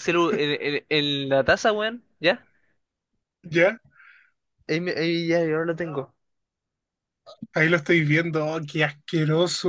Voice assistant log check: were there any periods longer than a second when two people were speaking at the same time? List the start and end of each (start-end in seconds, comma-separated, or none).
none